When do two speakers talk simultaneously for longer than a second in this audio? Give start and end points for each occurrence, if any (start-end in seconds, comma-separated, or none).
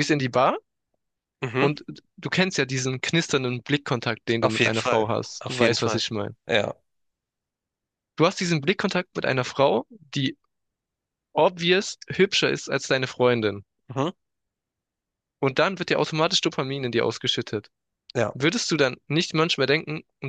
4.4-6.0